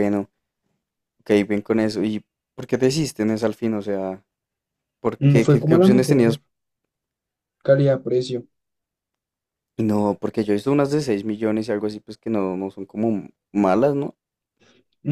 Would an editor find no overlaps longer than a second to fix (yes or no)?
no